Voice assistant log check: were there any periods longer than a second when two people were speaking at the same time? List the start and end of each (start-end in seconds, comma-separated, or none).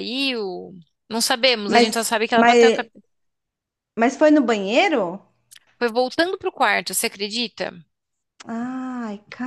1.7-2.9